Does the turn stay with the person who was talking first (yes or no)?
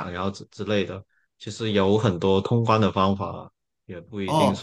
no